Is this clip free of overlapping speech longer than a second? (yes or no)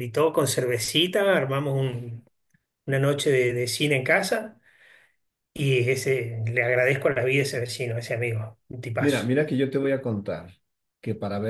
yes